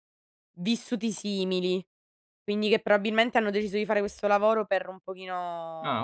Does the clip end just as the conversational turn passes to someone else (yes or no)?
no